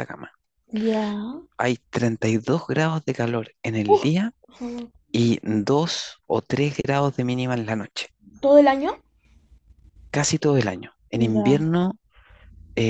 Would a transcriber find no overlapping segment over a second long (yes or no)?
yes